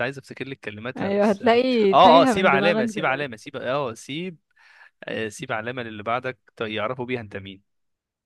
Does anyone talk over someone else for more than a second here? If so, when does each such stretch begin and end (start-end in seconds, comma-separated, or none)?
1.0-3.3